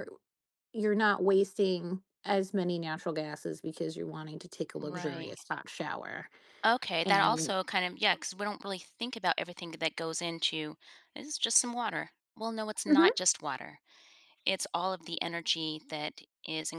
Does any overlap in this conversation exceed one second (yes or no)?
no